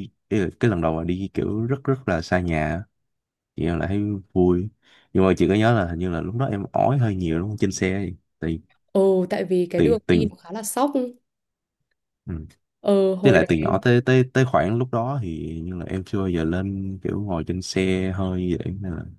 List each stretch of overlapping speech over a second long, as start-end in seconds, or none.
none